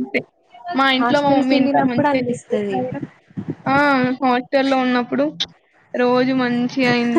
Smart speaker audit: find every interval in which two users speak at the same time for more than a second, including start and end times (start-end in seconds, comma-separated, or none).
1.0-2.8